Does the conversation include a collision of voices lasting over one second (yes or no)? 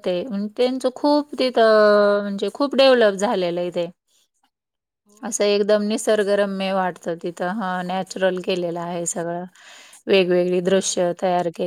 no